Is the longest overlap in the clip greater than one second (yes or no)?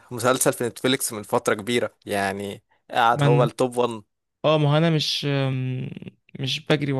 no